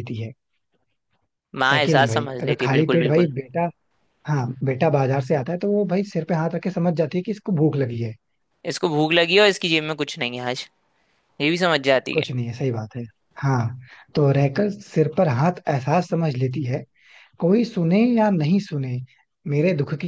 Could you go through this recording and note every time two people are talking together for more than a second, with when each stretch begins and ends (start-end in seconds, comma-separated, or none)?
1.7-3.3